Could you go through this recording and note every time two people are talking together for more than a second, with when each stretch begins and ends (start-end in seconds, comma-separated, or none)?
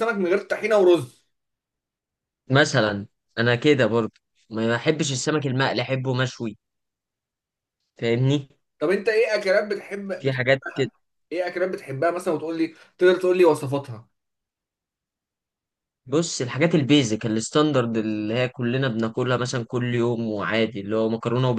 none